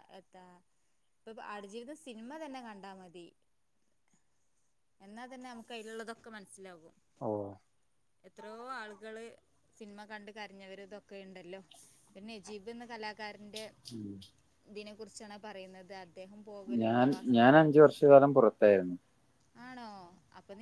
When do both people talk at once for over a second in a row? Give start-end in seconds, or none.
none